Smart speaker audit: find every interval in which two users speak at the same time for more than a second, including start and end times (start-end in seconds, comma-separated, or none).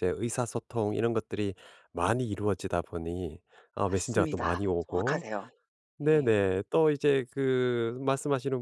3.8-5.2